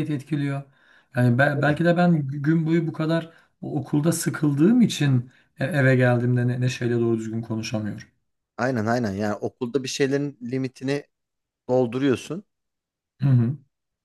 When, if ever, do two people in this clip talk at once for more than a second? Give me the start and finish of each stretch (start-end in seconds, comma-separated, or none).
none